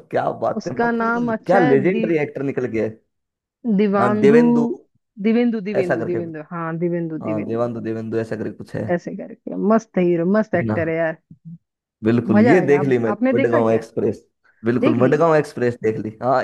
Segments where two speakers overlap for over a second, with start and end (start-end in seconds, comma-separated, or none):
0.6-2.0, 12.3-13.8